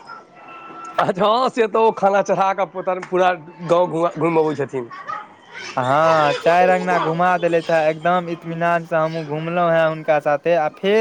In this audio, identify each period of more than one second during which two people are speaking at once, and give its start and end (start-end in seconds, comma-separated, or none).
none